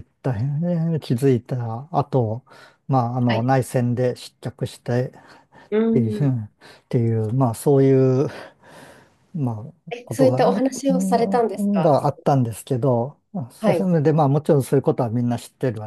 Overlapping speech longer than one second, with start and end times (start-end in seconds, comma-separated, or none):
9.9-12.0